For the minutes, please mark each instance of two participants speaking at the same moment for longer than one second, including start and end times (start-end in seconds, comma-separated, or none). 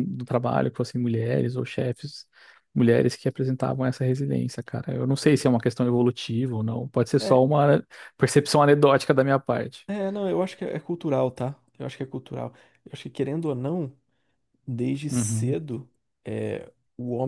none